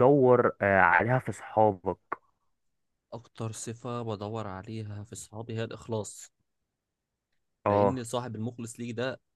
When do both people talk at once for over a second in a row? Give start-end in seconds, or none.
none